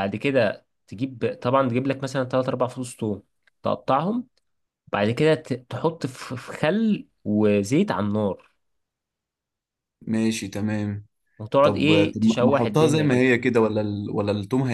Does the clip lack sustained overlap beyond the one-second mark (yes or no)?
no